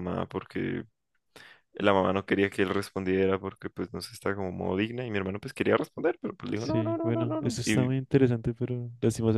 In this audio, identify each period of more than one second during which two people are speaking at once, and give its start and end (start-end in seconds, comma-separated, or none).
6.5-7.9